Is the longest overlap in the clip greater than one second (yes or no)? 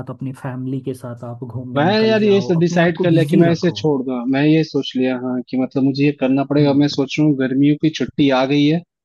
yes